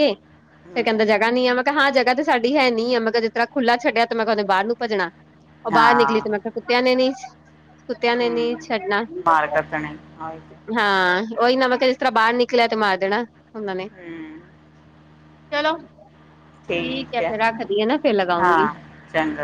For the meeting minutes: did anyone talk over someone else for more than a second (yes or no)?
no